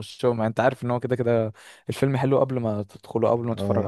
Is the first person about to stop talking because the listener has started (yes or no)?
yes